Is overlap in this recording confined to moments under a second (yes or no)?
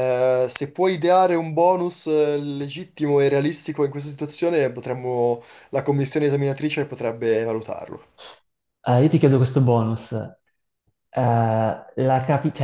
yes